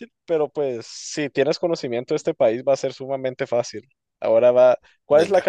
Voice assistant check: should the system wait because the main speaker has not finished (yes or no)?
yes